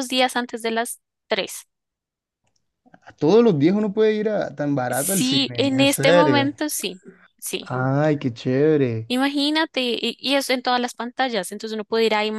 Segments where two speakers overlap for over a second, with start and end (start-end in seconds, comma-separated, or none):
4.9-6.5